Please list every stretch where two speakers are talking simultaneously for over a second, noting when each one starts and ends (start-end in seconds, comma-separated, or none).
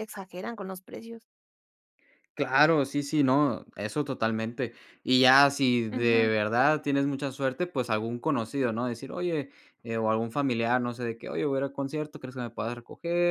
none